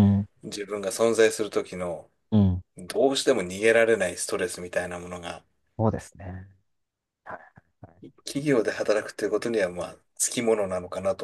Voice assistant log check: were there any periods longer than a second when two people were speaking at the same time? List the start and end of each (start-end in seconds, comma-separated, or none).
none